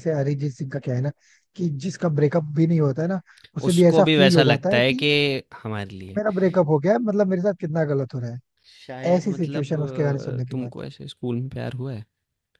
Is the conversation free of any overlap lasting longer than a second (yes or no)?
no